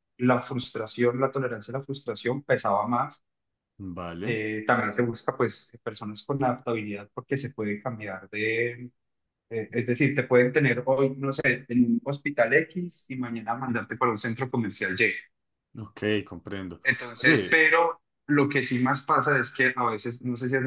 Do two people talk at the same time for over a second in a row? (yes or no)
no